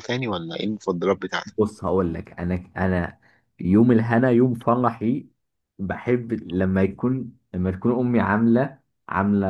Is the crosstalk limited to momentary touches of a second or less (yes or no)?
yes